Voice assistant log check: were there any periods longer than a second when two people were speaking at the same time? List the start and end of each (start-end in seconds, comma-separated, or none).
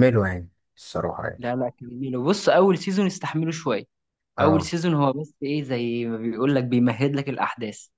none